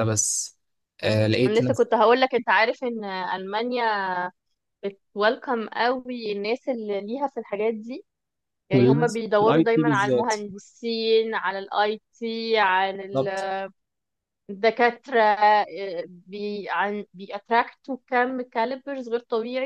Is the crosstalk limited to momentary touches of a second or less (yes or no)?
no